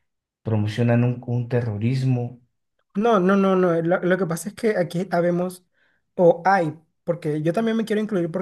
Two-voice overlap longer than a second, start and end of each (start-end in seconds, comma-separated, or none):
none